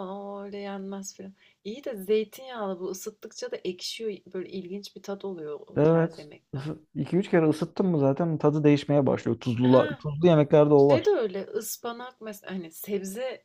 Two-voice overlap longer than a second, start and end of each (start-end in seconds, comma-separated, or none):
none